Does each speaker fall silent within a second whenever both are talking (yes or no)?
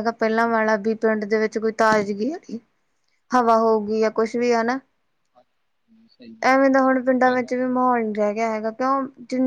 yes